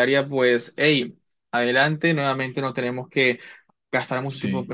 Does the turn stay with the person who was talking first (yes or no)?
yes